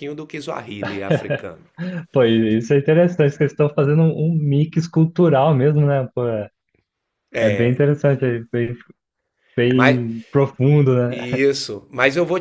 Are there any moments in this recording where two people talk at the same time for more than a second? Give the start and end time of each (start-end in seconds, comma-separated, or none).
none